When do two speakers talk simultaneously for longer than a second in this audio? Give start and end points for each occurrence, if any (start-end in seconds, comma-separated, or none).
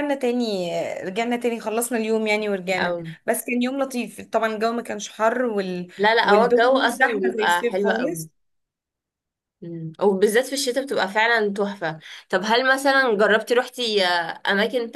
6.0-8.3